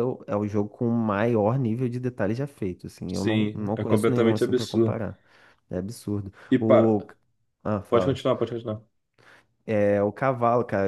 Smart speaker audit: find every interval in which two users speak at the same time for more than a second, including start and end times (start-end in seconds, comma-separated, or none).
3.1-5.0